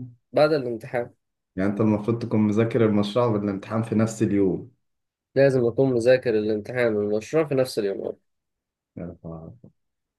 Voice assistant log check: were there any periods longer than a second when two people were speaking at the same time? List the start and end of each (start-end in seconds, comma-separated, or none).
none